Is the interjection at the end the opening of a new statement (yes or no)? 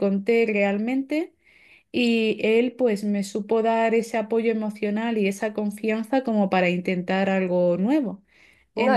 yes